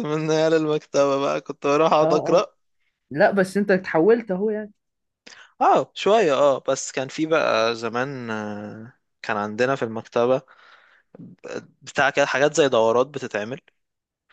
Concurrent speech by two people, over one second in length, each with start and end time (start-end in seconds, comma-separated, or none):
none